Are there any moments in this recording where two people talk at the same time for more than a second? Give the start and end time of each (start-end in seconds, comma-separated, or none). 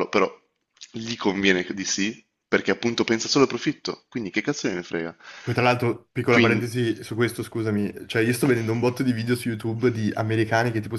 none